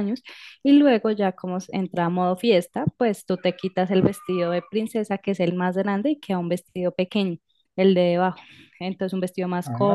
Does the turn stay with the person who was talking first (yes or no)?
yes